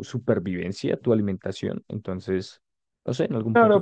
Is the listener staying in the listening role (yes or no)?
no